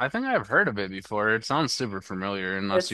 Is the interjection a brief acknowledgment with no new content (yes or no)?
no